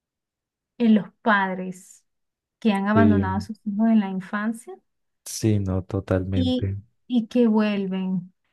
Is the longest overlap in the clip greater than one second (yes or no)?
no